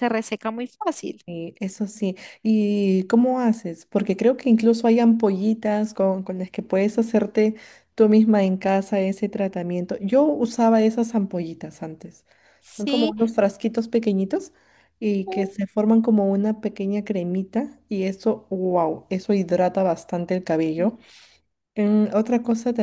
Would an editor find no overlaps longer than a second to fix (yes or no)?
yes